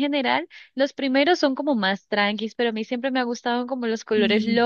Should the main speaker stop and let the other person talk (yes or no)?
no